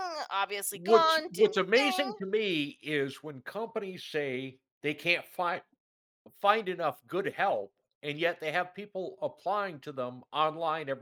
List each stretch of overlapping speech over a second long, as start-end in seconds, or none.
0.7-2.2